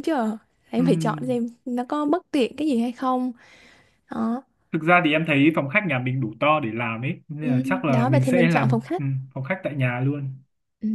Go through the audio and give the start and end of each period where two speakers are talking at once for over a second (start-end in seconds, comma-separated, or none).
7.4-9.0